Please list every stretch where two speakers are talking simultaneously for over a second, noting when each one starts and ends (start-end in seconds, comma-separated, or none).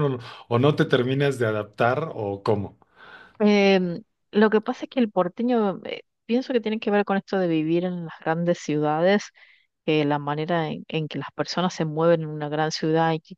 none